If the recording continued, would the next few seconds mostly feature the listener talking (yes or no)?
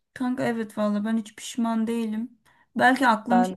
no